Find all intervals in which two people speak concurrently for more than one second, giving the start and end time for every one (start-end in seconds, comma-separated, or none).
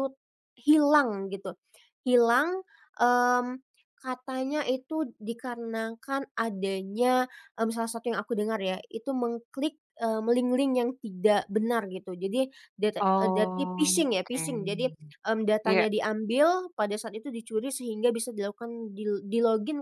13.0-14.4